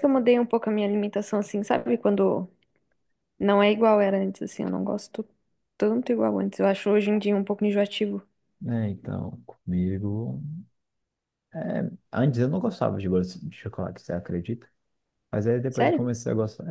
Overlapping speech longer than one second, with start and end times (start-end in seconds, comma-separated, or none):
none